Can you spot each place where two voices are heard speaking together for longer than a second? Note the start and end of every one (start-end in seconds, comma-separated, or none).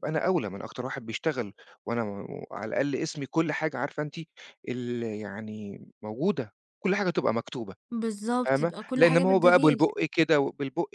8.4-9.8